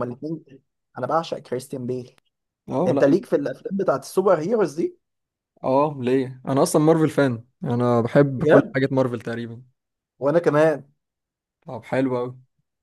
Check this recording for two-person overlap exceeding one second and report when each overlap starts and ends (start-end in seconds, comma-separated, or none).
none